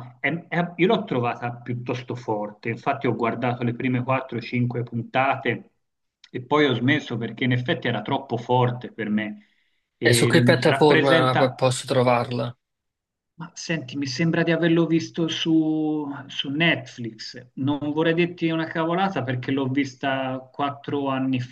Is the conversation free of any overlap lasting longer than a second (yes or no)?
no